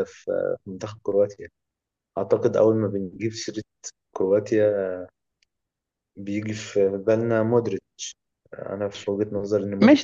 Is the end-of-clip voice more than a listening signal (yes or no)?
yes